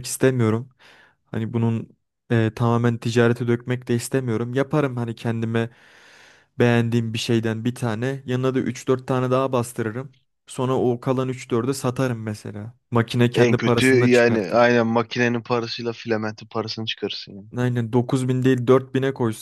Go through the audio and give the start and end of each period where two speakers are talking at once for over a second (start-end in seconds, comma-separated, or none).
13.3-14.7